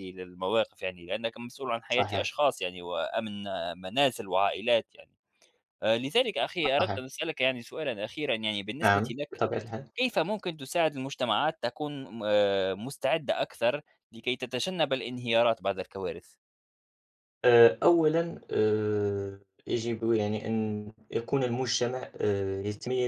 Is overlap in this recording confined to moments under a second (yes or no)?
yes